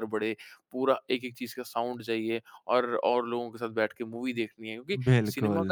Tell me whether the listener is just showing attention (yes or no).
yes